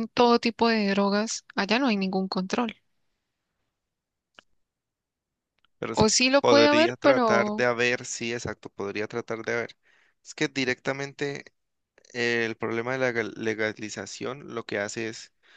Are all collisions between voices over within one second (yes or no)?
no